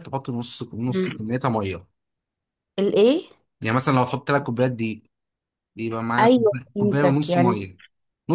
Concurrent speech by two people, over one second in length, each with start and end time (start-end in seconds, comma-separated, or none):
6.2-7.6